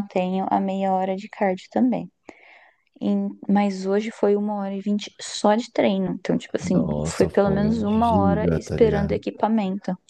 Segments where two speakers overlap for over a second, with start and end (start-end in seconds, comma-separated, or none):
6.7-9.2